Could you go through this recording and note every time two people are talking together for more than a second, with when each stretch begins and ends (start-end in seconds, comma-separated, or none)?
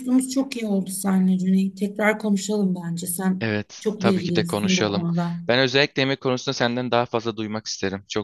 3.4-5.1